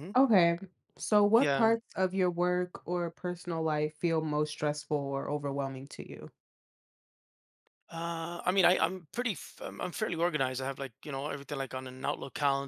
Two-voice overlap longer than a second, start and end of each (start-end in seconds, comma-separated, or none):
none